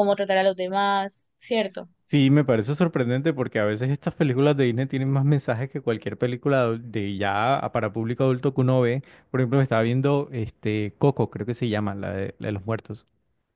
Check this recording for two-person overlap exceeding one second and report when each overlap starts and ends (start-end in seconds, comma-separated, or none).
none